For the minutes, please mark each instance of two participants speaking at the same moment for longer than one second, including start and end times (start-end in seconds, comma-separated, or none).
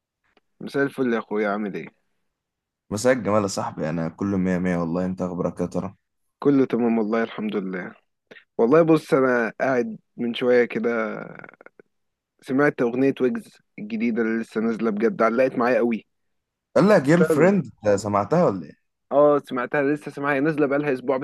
none